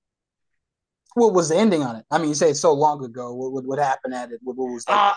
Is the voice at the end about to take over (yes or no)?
yes